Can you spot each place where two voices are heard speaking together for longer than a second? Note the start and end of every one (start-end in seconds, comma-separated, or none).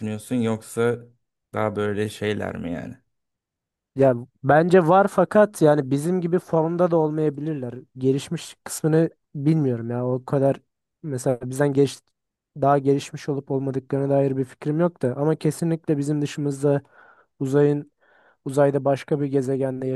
none